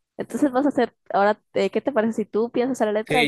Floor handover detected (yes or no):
yes